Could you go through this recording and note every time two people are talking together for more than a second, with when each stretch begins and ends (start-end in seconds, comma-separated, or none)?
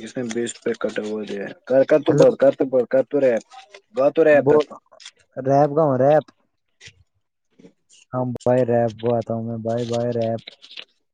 none